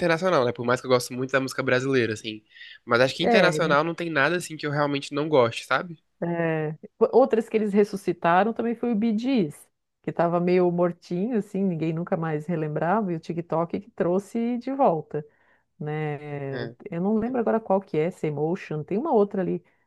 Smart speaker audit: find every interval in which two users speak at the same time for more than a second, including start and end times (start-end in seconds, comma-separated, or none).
none